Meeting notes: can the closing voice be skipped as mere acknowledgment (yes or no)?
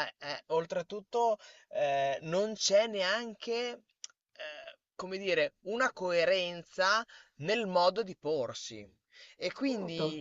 yes